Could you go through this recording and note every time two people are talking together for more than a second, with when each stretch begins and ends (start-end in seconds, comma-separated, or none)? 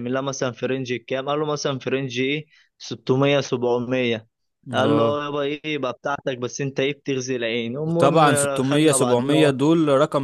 7.8-9.3